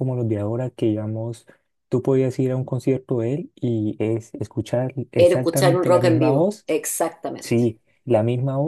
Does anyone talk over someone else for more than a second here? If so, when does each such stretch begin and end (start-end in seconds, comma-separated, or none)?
5.2-6.7